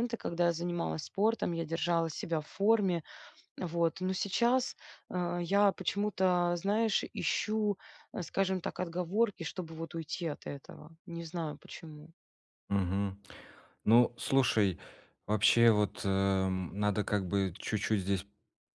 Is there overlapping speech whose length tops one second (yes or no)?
no